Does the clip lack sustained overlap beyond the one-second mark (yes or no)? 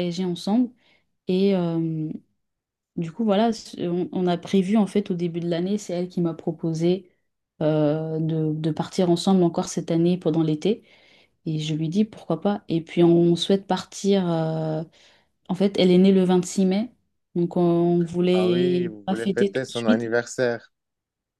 no